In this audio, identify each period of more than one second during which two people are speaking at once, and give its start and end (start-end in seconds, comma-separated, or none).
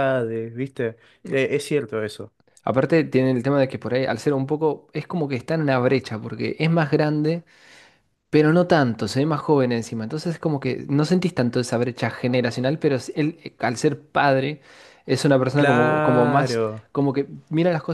15.6-16.9